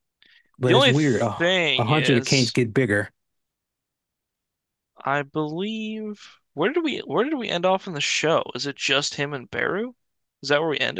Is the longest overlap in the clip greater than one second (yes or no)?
yes